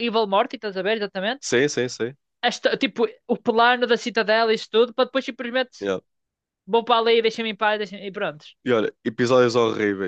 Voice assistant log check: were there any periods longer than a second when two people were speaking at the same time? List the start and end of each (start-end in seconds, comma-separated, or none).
none